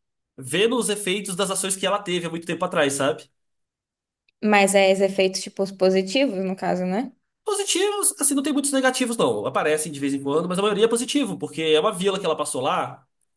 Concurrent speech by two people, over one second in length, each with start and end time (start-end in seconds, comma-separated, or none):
none